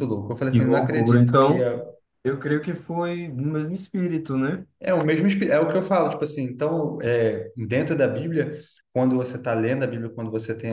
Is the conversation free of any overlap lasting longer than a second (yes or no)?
no